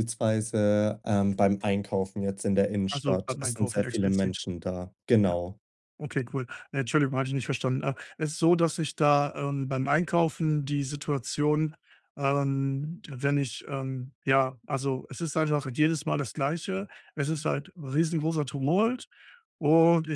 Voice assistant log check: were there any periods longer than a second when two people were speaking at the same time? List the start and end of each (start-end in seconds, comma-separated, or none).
2.9-4.4